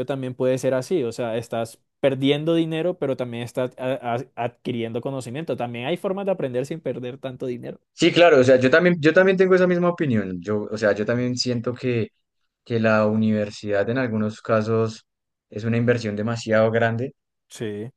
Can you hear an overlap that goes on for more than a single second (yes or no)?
no